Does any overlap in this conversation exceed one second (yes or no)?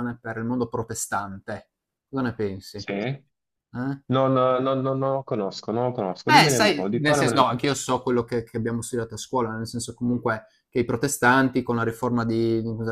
yes